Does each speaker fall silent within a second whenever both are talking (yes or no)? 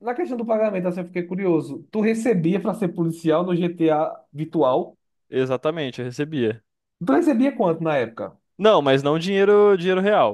yes